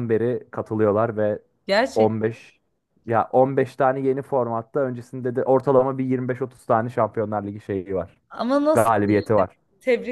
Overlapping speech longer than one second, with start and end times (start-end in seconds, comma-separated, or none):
none